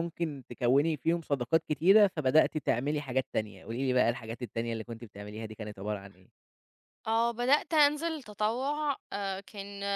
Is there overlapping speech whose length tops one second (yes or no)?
no